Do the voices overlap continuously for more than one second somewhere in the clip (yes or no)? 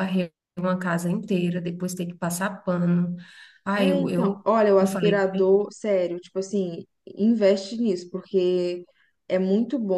yes